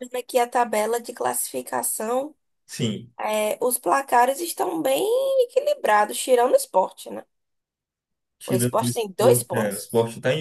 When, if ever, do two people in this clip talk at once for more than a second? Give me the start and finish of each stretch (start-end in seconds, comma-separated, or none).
8.5-9.9